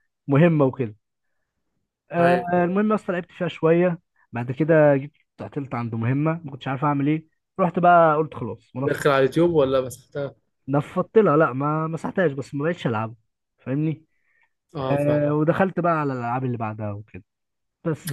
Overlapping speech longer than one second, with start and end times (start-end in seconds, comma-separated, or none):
none